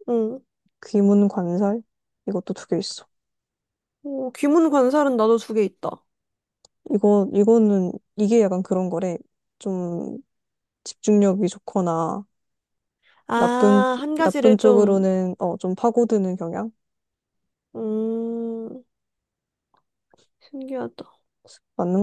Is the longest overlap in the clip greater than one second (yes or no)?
yes